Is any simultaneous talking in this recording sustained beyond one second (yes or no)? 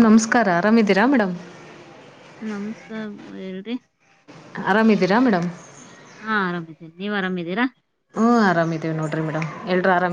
no